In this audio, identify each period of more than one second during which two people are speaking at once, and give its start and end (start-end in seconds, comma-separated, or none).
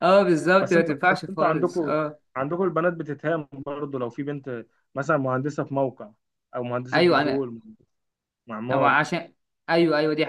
0.6-2.0